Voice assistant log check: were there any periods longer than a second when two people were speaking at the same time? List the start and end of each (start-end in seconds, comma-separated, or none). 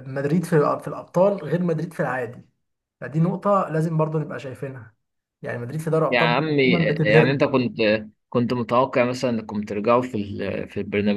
6.1-7.4